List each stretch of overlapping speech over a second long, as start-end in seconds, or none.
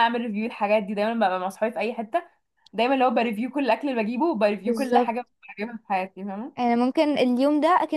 none